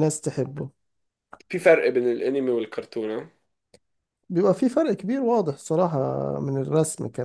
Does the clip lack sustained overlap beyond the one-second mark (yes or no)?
yes